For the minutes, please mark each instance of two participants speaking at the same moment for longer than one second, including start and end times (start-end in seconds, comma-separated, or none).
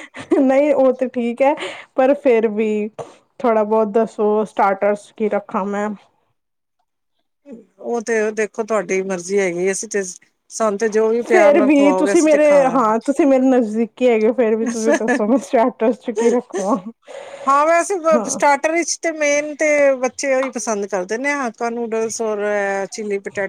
11.3-12.9